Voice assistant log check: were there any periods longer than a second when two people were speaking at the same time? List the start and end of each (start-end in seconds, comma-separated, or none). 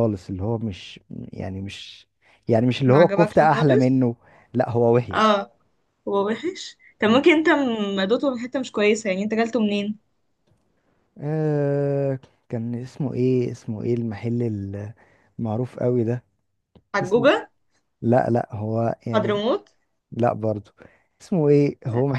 2.9-4.0